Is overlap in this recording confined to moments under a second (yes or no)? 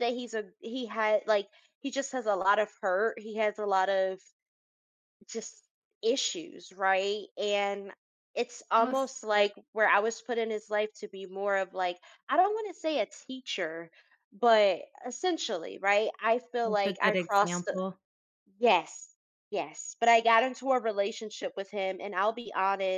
no